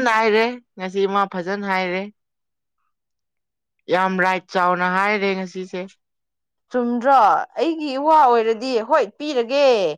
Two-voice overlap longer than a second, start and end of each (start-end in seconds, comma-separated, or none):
none